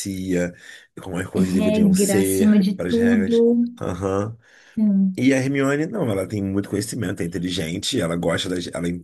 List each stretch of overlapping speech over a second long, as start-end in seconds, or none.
1.6-3.4